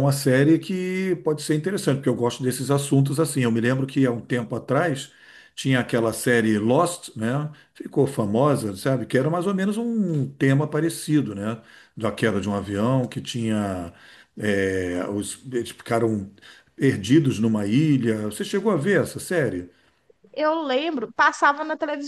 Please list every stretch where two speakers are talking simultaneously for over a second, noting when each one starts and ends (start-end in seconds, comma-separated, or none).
none